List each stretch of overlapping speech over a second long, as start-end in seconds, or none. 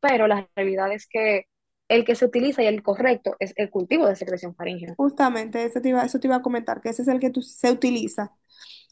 none